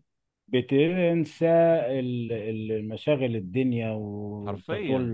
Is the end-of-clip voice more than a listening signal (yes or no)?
no